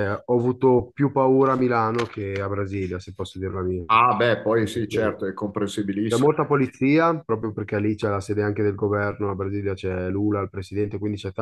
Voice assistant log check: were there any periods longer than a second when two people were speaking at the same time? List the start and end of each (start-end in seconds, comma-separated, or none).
none